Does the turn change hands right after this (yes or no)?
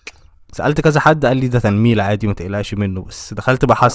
no